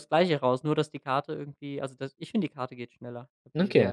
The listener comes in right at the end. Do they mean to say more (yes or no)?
yes